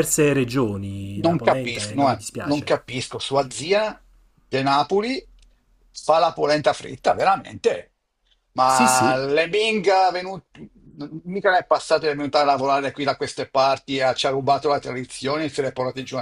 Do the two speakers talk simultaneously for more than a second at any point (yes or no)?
yes